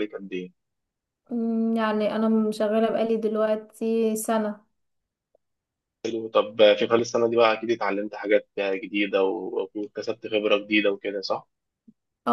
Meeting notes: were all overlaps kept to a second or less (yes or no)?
yes